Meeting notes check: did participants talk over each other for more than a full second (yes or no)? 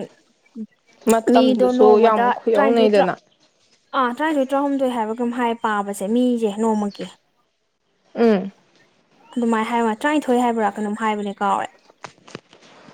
yes